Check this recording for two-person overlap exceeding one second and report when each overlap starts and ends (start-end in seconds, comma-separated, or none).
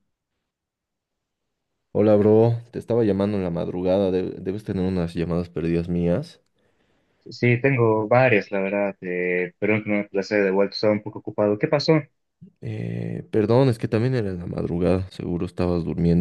none